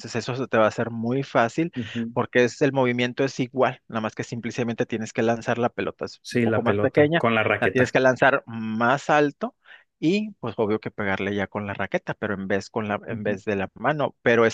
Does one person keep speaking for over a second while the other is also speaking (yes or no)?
yes